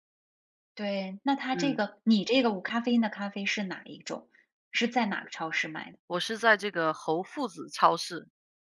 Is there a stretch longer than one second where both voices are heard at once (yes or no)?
no